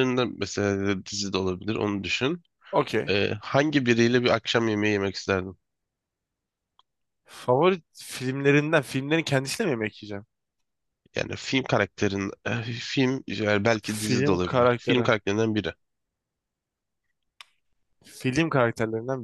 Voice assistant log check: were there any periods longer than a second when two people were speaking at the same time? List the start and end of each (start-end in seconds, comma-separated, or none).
13.8-15.1